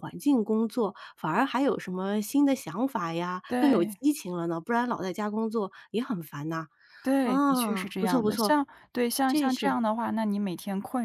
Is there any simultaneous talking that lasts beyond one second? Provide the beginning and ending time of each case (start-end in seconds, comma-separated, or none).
7.2-8.6